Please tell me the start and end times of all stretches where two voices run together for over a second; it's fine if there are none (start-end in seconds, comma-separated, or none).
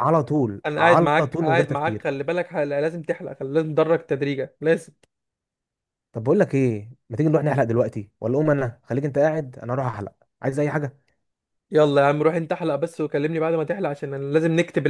0.7-2.0